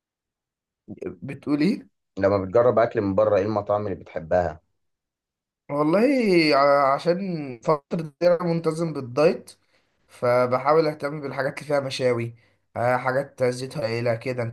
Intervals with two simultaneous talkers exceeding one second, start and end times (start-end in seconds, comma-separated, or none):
none